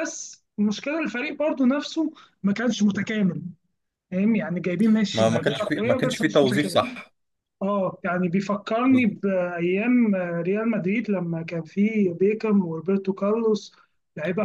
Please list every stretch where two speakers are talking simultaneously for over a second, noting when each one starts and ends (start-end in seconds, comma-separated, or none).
5.1-7.0